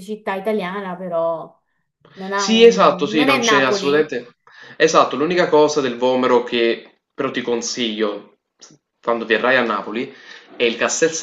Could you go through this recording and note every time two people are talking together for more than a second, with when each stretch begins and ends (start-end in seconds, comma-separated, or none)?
2.3-4.1